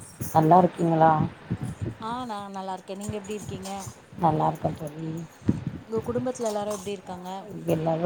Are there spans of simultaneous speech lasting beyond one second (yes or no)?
no